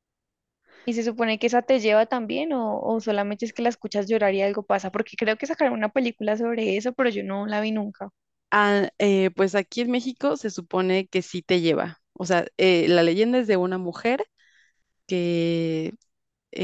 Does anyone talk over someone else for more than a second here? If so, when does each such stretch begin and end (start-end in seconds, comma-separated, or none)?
none